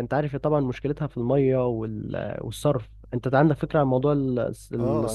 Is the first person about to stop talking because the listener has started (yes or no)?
yes